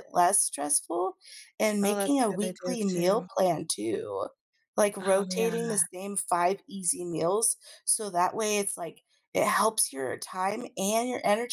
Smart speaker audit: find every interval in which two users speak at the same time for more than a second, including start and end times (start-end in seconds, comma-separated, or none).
1.8-3.3